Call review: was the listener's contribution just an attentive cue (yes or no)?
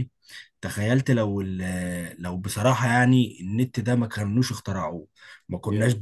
yes